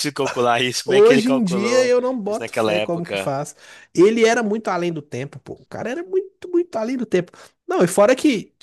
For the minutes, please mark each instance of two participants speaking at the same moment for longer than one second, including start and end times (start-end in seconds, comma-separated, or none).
0.9-3.3